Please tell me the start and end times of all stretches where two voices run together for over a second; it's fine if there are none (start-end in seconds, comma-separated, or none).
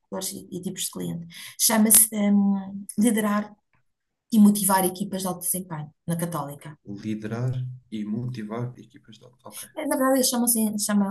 none